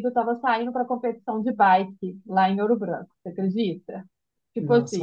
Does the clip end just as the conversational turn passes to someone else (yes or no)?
yes